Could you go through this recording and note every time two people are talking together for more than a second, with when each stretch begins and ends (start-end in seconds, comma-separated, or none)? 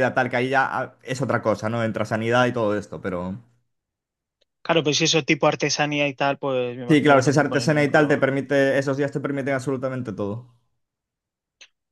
6.9-8.3